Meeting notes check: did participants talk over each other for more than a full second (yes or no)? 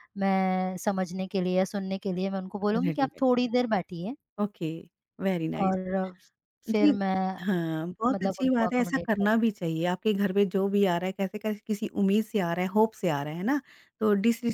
yes